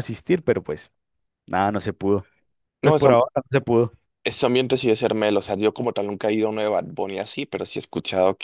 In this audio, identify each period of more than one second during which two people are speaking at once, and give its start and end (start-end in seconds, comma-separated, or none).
none